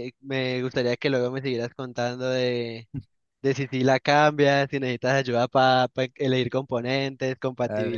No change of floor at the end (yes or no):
no